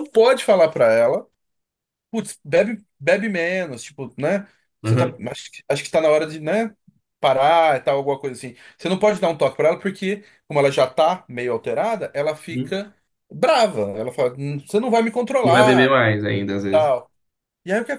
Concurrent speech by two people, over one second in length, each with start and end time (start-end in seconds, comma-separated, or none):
none